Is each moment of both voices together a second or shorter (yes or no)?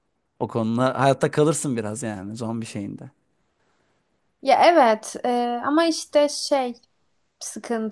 yes